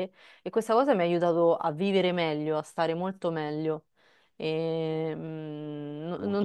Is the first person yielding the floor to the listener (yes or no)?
no